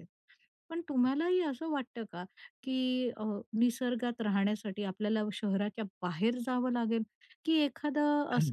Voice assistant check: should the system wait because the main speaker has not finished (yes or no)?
yes